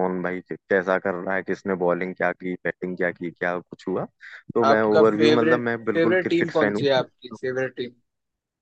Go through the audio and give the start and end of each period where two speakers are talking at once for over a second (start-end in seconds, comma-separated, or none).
4.6-7.4